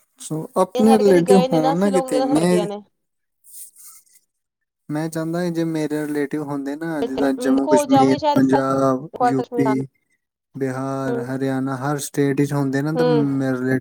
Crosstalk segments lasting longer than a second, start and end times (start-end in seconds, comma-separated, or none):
0.8-2.6, 7.0-9.8